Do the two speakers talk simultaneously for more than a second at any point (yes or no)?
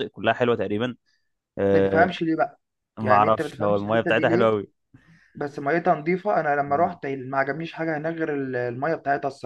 yes